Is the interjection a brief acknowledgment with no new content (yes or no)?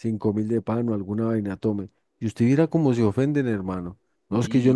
yes